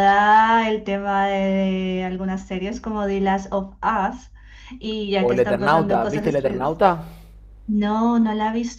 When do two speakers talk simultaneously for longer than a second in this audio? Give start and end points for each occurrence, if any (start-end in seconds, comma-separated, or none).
5.2-6.7